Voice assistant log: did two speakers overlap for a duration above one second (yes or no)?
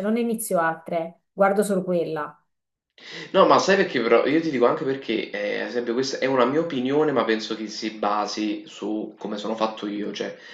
no